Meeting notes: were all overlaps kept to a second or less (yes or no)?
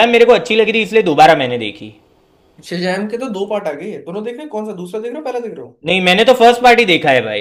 yes